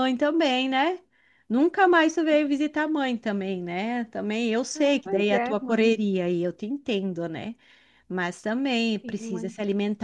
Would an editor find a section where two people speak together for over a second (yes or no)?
yes